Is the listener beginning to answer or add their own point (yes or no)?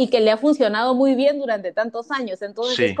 no